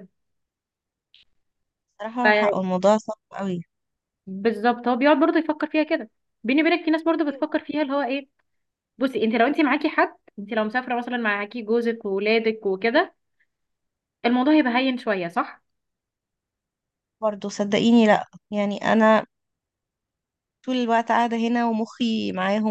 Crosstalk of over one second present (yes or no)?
no